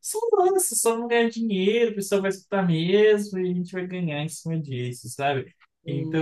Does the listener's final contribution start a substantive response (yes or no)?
no